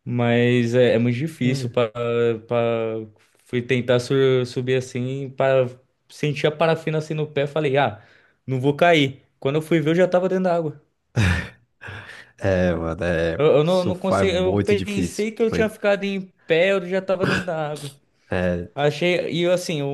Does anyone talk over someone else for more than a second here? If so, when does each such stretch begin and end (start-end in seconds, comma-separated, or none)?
13.3-15.7